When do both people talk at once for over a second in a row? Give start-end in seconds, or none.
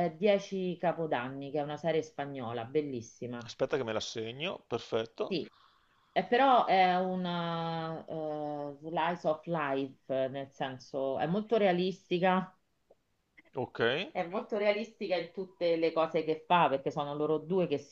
none